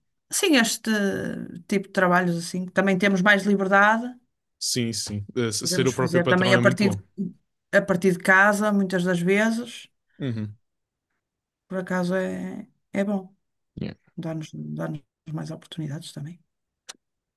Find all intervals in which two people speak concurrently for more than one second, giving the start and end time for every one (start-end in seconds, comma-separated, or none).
5.6-7.0